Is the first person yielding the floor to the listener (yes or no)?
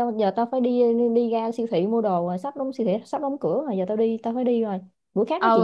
yes